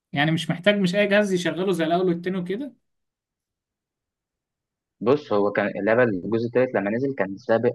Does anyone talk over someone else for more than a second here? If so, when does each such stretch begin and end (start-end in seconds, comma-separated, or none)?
none